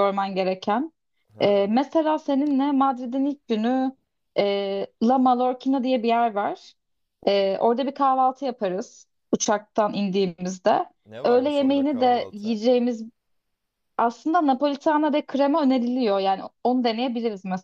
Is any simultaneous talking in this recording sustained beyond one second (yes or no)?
yes